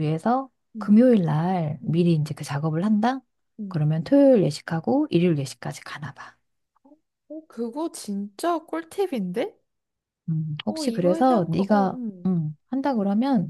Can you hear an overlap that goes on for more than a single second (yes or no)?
yes